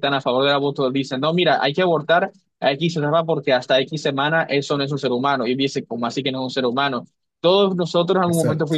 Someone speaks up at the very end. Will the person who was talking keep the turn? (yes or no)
yes